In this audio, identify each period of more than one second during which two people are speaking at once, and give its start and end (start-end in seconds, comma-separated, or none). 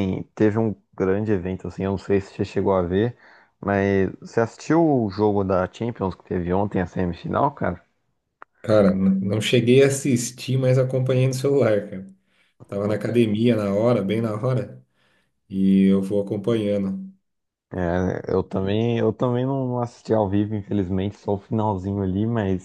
none